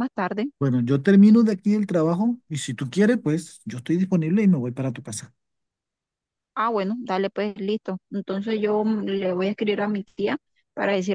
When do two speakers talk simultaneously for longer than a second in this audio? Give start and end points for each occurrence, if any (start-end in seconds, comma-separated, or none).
none